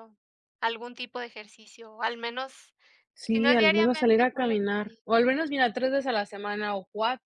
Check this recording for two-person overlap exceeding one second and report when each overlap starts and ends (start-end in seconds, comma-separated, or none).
3.3-5.0